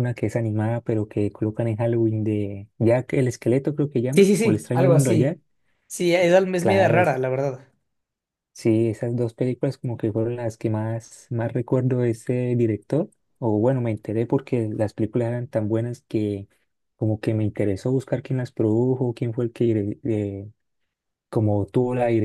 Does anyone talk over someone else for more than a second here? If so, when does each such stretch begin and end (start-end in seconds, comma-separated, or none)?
4.1-5.4